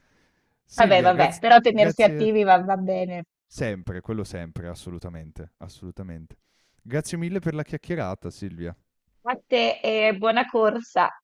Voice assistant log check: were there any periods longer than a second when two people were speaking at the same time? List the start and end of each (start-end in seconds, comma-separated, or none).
0.8-2.3